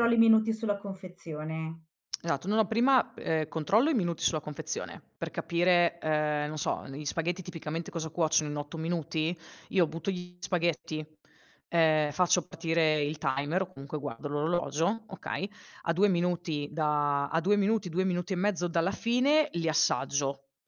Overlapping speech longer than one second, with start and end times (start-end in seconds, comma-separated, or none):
none